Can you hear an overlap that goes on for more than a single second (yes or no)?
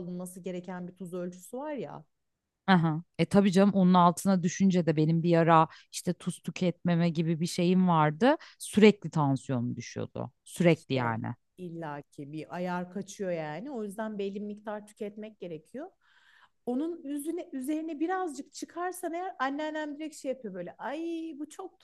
no